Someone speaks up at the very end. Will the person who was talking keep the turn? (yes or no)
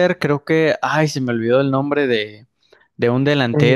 yes